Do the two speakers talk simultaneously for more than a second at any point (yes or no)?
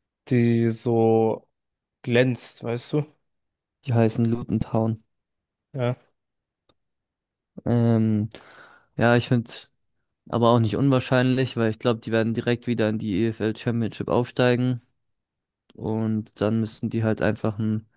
no